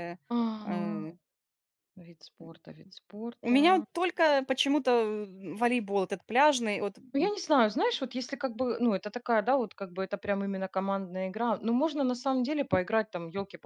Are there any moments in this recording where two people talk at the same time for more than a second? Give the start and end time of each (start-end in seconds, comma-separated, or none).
none